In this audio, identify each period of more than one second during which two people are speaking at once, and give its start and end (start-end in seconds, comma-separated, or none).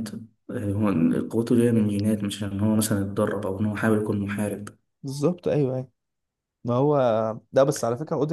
none